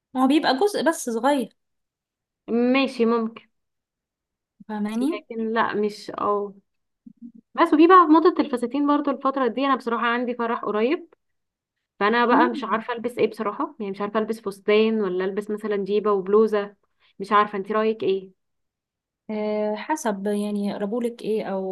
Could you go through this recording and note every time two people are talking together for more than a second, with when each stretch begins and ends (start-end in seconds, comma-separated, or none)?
none